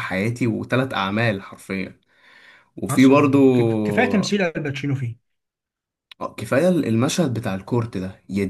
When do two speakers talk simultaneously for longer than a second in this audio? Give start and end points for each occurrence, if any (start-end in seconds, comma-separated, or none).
none